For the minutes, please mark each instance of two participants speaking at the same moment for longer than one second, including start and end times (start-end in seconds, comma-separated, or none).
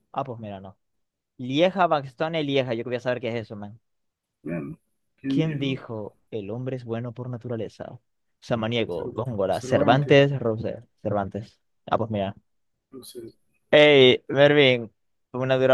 8.9-10.2